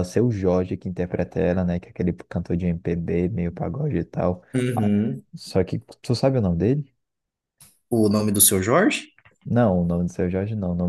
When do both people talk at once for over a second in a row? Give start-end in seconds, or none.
none